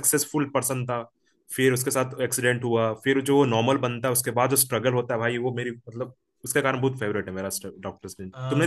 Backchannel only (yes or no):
no